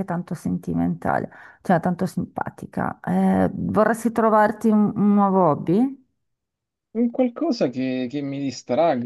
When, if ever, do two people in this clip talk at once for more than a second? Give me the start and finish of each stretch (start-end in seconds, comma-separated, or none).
none